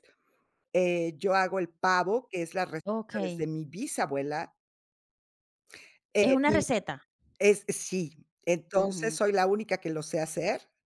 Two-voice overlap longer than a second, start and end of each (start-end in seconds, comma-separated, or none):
none